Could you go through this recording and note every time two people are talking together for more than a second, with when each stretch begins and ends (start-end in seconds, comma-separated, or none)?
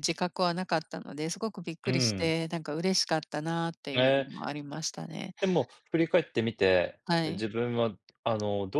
none